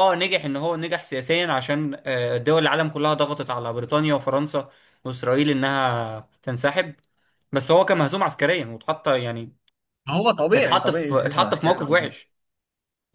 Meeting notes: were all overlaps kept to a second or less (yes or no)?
no